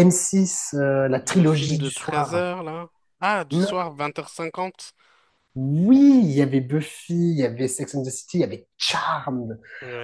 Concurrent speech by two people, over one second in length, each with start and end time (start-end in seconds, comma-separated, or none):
1.2-2.4